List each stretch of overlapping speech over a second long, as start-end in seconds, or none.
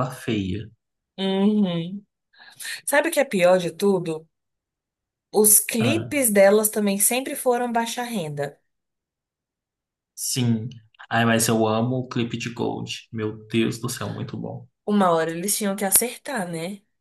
none